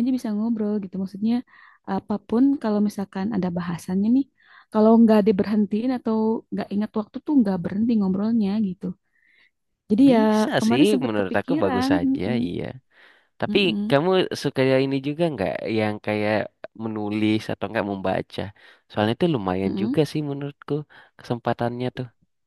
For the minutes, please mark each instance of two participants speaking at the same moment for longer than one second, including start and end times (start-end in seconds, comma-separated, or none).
10.1-12.5